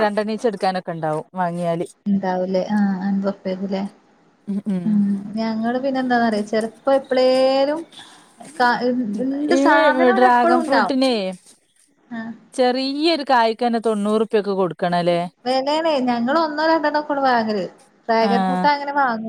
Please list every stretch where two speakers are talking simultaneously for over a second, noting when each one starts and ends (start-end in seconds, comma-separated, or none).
9.7-10.9